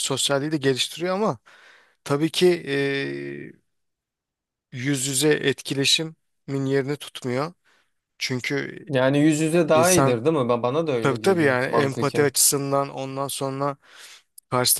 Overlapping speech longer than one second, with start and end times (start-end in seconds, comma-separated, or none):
11.0-12.3